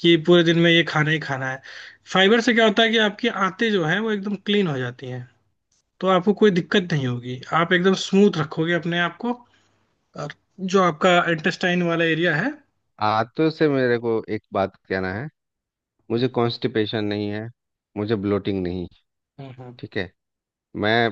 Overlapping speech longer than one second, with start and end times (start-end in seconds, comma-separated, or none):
none